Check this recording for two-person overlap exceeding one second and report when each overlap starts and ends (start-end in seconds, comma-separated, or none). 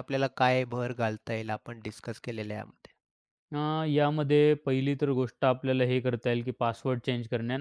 none